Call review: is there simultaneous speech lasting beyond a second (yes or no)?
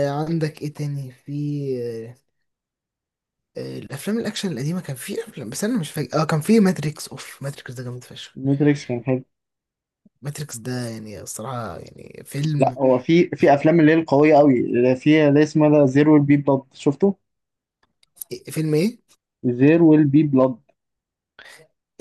no